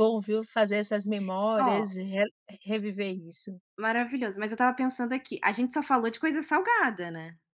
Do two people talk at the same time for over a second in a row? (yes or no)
no